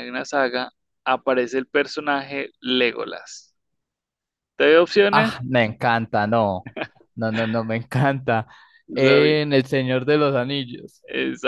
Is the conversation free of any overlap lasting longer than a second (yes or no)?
yes